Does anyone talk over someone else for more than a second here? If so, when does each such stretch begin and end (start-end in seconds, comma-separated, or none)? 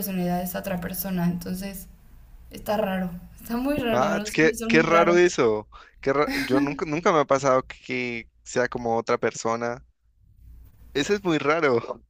3.9-5.2